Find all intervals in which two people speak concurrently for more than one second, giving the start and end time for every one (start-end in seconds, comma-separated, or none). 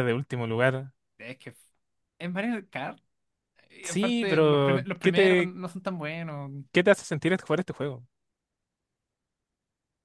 3.8-5.5